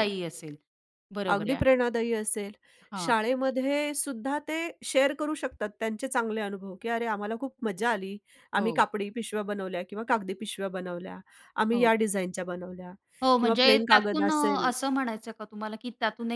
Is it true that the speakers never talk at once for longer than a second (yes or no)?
no